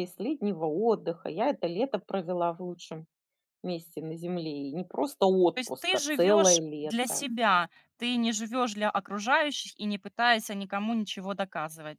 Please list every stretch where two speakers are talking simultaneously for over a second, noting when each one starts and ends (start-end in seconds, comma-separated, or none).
5.5-7.2